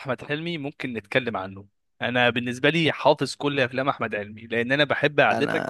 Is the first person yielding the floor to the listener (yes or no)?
no